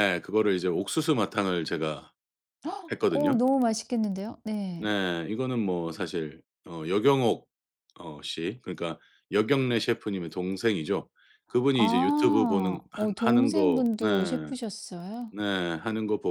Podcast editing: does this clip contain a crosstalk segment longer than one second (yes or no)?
yes